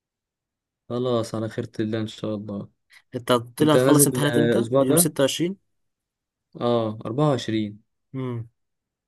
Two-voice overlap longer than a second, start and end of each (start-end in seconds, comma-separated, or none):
3.6-5.1